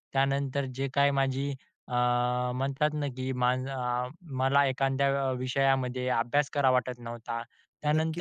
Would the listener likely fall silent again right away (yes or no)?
no